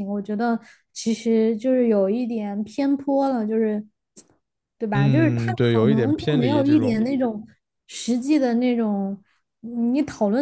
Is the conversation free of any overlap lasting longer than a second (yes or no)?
no